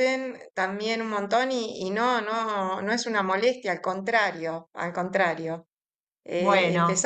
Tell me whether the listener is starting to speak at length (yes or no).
no